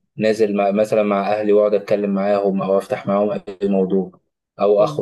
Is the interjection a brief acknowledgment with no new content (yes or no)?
yes